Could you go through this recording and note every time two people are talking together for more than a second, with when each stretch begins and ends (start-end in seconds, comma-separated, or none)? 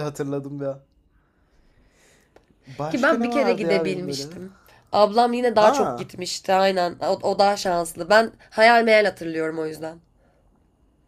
2.9-4.3